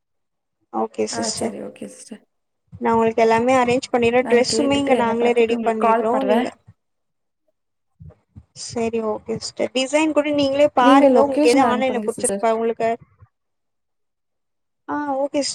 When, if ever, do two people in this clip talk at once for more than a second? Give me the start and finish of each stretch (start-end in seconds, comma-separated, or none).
4.3-6.4, 10.8-12.4